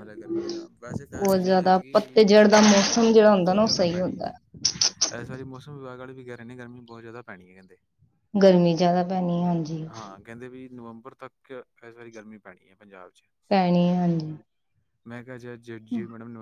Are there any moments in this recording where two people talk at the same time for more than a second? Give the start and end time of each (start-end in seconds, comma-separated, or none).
1.2-4.3